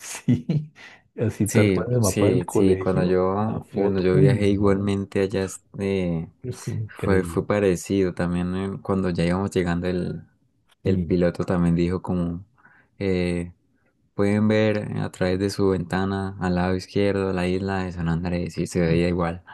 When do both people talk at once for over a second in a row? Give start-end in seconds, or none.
1.5-4.9